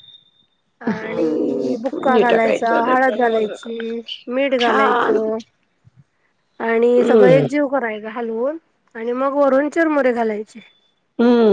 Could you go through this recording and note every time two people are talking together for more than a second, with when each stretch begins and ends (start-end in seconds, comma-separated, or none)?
1.0-3.5